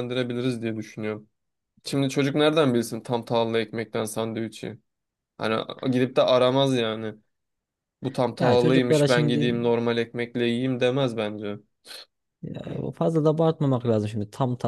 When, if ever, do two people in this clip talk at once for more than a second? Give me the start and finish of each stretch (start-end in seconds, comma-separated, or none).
8.4-9.6